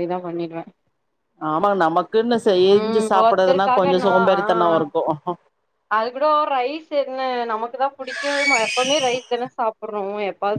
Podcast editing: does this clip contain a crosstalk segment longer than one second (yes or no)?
yes